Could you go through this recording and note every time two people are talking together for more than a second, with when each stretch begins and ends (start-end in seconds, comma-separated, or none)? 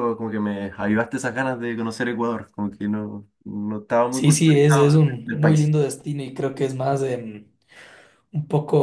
4.1-5.7